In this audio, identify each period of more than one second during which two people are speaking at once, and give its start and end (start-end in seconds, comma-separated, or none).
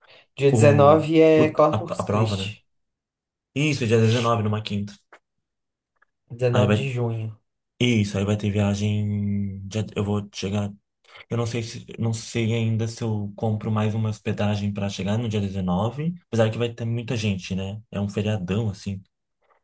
0.5-2.5